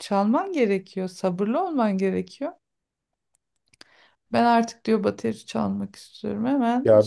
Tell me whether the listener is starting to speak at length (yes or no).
yes